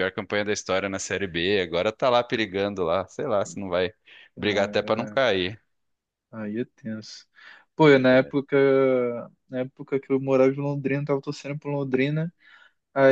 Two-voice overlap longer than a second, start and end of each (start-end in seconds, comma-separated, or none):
none